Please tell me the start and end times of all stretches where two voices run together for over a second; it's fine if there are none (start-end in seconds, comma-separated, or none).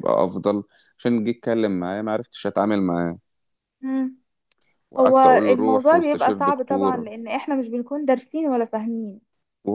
5.0-7.0